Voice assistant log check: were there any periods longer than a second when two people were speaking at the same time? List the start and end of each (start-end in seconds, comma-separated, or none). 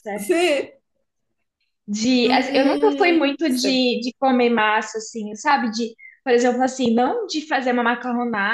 2.2-3.8